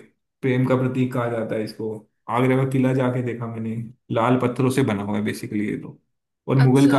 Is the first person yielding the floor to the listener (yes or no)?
no